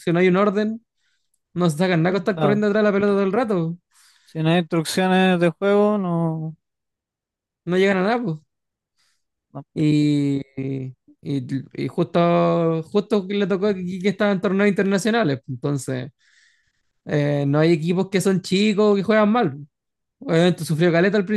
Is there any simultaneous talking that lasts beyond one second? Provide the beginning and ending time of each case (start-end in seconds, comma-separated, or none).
none